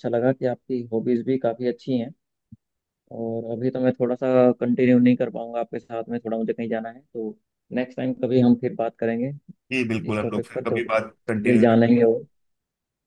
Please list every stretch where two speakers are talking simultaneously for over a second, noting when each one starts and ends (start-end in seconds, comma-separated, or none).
10.1-12.1